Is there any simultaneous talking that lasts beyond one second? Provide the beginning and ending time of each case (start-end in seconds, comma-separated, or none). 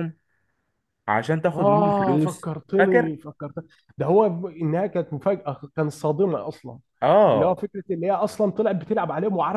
1.5-3.1